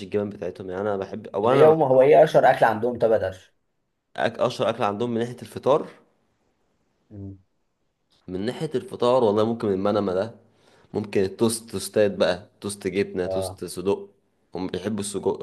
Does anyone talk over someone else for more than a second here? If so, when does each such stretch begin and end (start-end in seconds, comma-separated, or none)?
none